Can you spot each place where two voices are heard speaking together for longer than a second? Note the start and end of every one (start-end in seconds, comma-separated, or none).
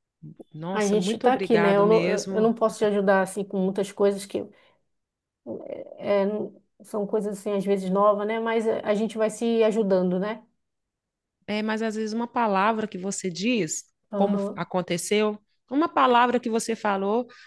0.7-2.6